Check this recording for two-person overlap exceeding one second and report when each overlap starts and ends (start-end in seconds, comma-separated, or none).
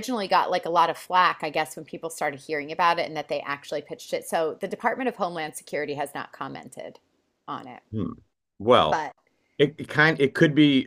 none